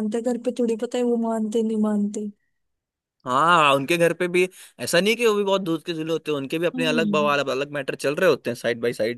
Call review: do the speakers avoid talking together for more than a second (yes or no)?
yes